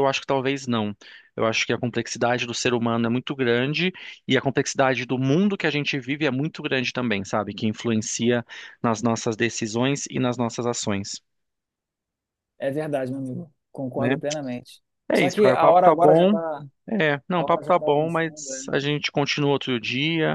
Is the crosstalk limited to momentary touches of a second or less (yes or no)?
no